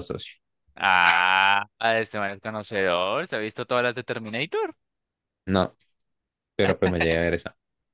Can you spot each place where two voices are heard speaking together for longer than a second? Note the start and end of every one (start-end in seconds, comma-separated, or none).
none